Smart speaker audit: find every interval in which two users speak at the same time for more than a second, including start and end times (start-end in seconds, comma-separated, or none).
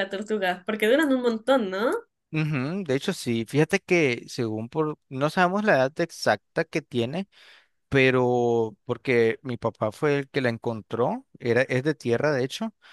none